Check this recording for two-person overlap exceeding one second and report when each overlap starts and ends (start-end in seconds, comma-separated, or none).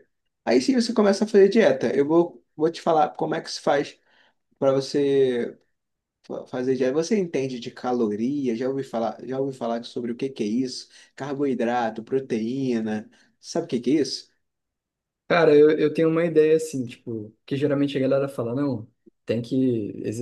none